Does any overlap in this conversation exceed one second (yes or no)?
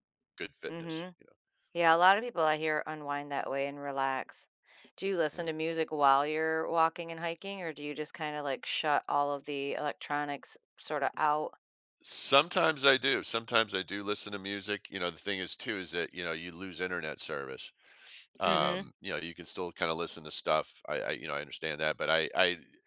no